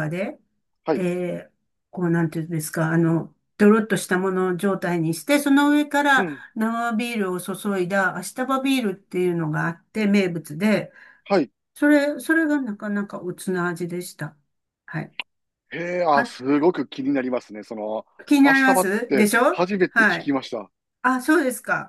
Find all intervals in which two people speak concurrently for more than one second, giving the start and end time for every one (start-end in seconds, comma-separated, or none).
18.4-20.3